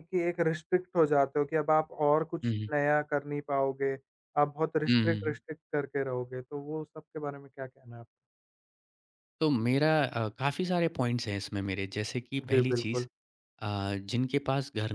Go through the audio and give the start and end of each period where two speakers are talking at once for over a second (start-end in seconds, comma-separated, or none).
none